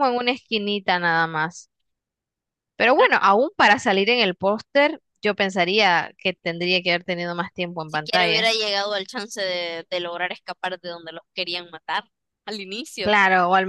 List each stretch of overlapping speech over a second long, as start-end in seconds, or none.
none